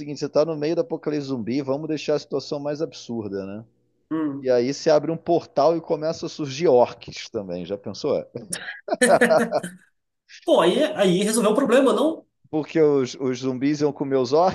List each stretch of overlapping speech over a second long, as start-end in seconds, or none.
none